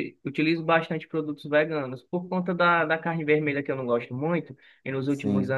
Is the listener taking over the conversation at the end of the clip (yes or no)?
no